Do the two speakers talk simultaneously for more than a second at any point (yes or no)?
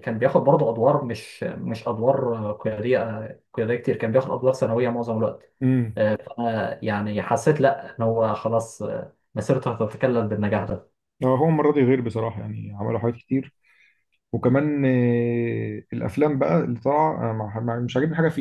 no